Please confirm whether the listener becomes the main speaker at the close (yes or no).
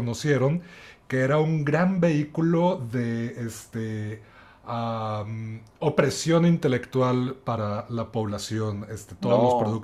no